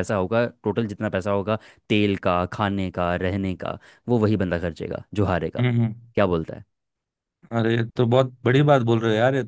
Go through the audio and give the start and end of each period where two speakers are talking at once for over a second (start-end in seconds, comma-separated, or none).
none